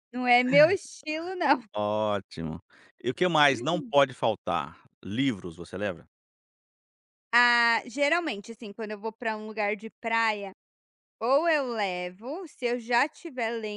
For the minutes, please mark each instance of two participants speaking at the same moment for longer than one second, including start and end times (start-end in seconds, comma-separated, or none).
none